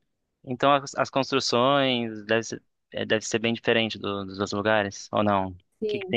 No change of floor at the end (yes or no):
no